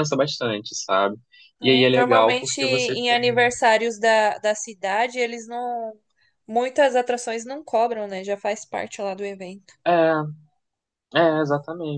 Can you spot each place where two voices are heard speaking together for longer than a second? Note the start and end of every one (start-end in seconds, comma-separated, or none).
1.6-3.5